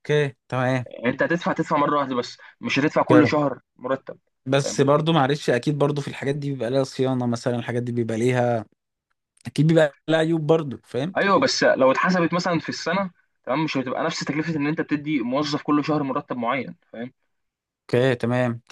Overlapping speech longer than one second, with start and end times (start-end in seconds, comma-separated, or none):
none